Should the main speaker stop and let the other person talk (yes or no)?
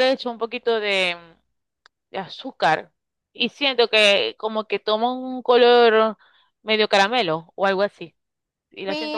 yes